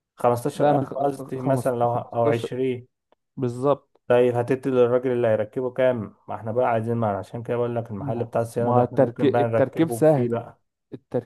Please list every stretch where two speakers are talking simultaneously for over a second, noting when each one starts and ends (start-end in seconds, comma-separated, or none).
0.6-2.5, 8.0-10.4